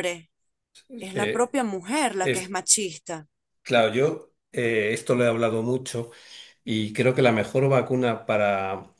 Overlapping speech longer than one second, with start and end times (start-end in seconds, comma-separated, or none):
none